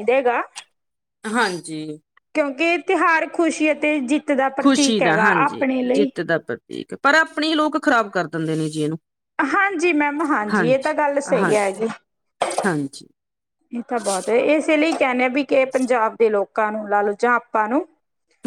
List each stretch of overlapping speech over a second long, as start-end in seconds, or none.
none